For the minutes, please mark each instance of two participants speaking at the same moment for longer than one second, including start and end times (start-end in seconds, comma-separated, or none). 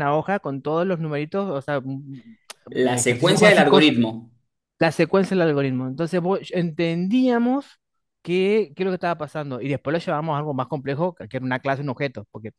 2.7-3.9